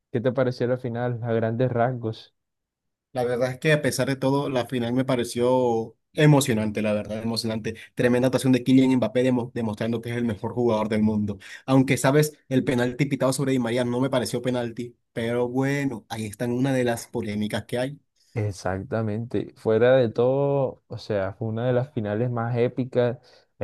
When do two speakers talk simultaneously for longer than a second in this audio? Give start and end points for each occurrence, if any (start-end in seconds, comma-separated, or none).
none